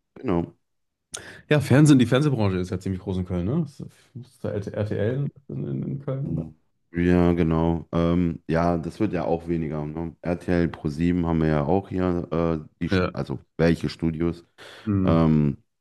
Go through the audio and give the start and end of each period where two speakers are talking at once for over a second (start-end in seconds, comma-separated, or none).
none